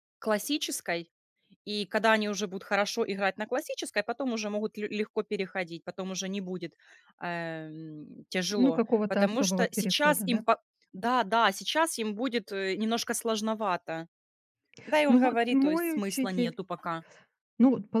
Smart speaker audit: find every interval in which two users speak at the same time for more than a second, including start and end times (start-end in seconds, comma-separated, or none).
8.6-10.4, 15.1-16.6